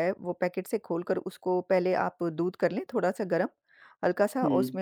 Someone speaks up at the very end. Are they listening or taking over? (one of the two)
listening